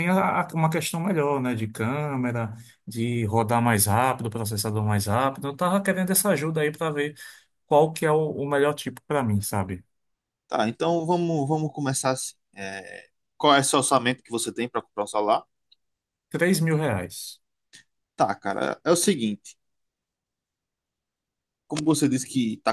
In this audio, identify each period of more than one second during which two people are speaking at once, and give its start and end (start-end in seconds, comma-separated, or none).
none